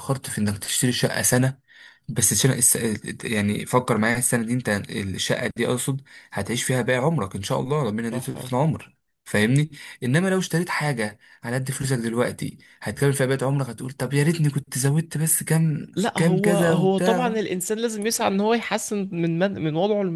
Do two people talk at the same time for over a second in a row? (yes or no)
yes